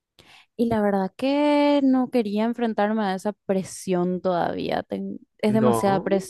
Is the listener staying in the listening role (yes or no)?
yes